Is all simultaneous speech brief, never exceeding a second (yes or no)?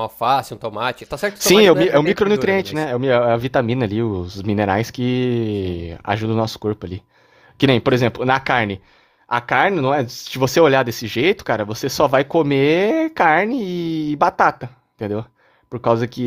no